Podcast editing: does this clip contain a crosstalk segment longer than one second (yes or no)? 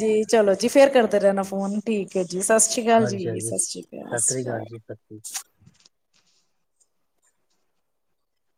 yes